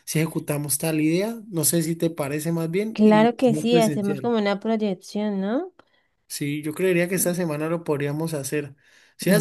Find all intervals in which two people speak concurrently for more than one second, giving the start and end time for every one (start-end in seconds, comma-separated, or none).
2.9-4.3